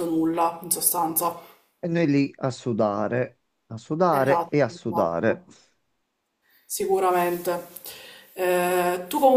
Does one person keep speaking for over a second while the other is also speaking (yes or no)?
yes